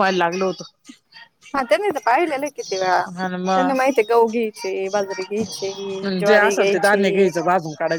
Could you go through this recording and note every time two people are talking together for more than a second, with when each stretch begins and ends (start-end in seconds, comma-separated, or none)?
none